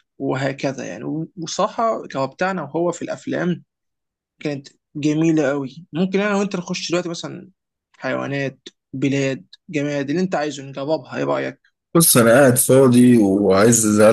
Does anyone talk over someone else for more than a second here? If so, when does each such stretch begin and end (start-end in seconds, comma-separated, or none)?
none